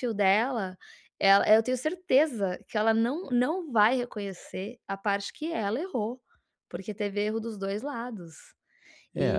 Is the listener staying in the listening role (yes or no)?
no